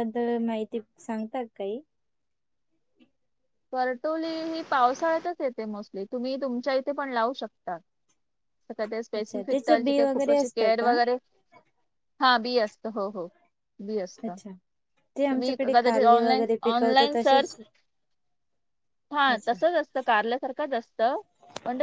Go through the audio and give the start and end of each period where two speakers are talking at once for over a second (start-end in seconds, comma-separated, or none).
9.1-10.9, 15.2-17.6